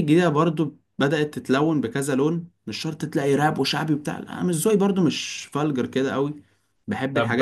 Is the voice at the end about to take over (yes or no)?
yes